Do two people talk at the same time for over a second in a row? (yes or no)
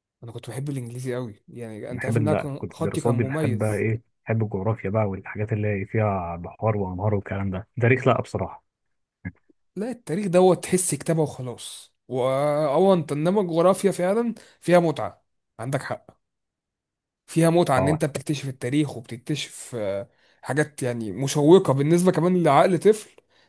yes